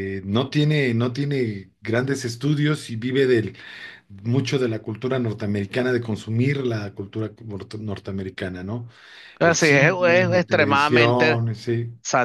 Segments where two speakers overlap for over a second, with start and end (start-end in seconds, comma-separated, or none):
9.4-11.4